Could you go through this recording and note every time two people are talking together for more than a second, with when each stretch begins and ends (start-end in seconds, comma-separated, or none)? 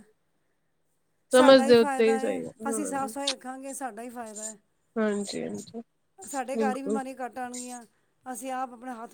1.4-3.1